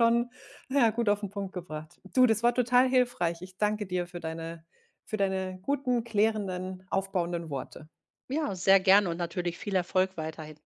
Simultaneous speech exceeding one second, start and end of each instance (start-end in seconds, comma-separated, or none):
none